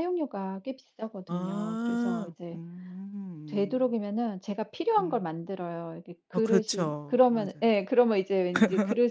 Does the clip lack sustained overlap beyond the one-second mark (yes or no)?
no